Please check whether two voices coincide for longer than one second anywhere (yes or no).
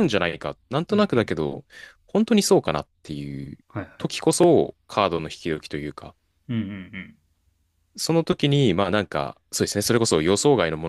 no